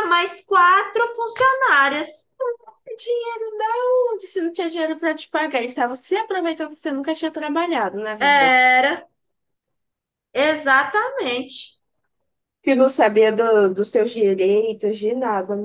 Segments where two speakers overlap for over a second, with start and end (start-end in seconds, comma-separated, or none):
none